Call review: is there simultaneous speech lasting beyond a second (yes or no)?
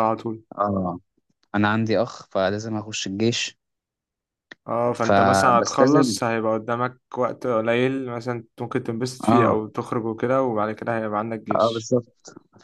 yes